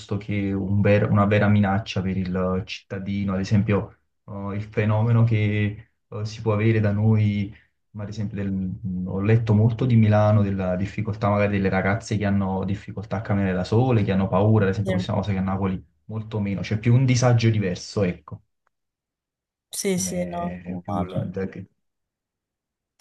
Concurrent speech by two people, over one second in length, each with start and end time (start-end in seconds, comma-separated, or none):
19.9-21.3